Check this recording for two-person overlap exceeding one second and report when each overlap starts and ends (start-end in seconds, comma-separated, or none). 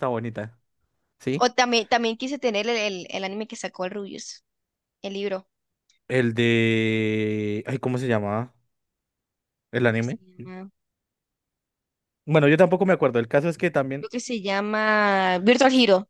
none